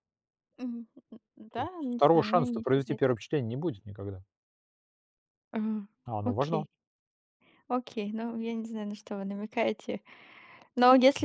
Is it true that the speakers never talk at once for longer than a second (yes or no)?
no